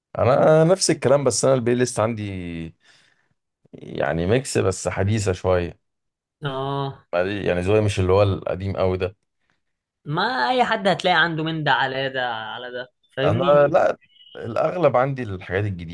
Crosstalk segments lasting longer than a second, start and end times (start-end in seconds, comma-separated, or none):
none